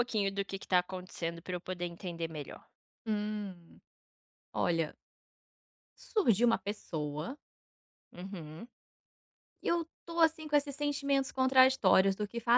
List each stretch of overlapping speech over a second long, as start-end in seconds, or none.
none